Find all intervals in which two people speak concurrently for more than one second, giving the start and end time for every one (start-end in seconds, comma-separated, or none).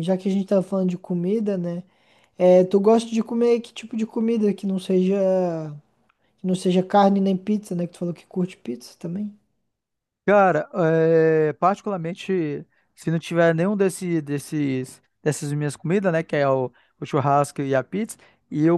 none